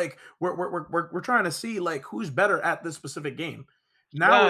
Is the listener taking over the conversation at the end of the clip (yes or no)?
yes